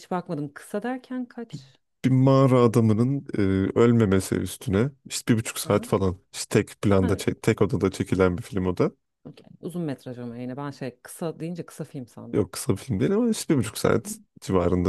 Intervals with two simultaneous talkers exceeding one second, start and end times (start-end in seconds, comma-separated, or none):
none